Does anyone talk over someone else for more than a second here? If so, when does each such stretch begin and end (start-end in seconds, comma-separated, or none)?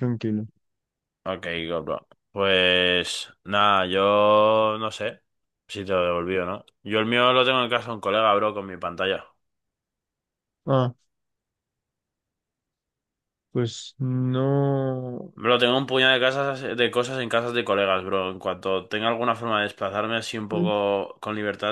none